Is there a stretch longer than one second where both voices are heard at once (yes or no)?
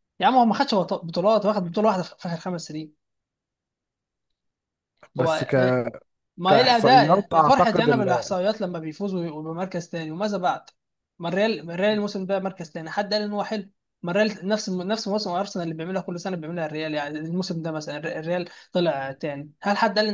yes